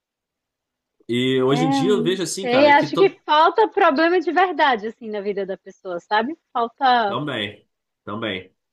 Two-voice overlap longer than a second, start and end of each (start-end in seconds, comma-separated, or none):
1.5-3.2